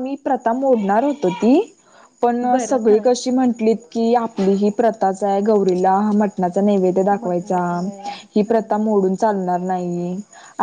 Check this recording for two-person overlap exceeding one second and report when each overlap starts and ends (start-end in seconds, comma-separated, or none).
none